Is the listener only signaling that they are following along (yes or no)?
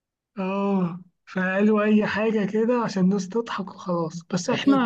yes